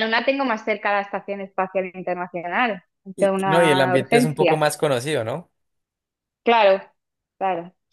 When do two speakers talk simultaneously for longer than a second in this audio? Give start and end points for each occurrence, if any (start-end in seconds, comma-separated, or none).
3.1-4.7